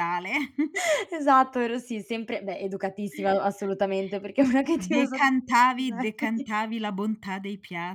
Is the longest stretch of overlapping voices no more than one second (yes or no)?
no